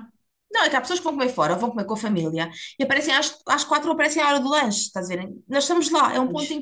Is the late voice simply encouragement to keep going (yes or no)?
yes